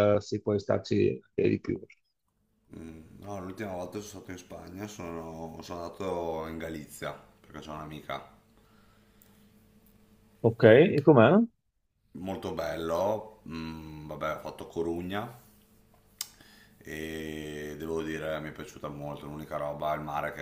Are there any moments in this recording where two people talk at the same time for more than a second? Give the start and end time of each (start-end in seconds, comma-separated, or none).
none